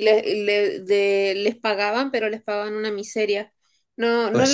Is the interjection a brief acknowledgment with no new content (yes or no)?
yes